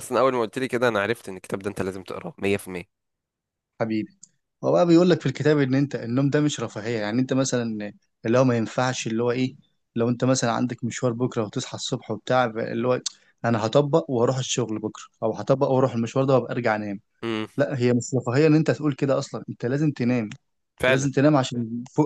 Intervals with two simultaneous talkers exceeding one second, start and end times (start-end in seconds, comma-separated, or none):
none